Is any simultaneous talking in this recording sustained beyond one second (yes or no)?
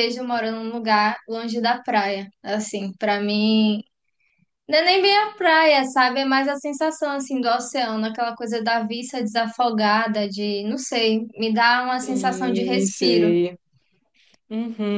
yes